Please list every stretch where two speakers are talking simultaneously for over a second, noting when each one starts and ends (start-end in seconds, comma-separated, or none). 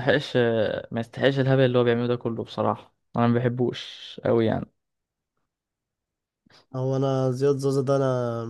none